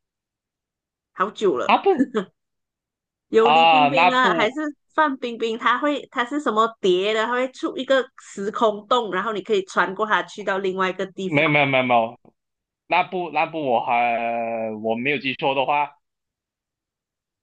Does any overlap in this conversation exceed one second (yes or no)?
yes